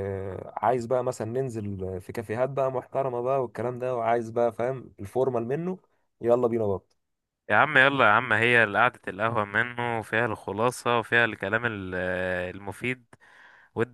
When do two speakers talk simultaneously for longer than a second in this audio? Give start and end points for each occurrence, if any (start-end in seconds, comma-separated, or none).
none